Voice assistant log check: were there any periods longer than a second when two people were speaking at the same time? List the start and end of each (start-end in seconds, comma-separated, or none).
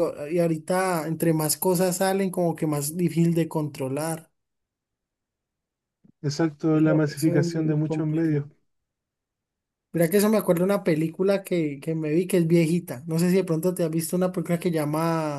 6.7-8.4